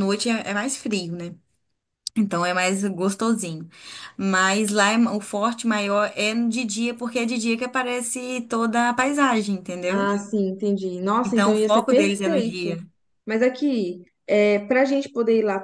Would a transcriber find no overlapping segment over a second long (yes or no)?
no